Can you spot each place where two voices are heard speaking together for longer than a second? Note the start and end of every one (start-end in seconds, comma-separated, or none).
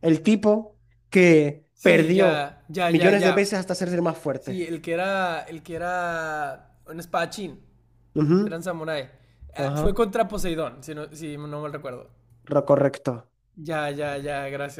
1.7-3.3